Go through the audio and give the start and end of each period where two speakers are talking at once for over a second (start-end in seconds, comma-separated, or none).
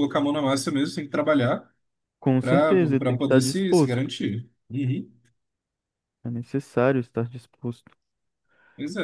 2.4-4.1